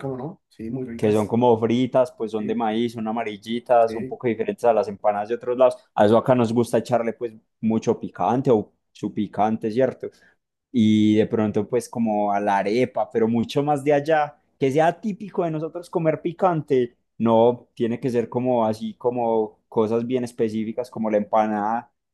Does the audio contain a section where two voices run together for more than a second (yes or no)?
no